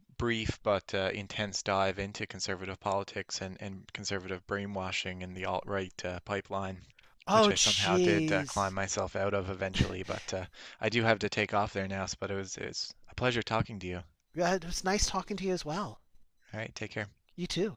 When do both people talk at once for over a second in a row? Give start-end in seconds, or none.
7.3-8.7